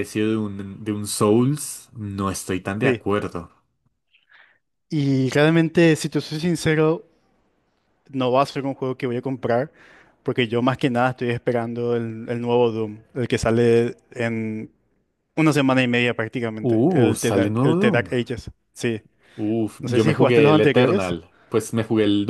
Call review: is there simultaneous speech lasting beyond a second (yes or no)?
yes